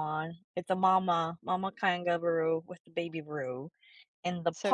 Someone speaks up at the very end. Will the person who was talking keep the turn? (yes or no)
yes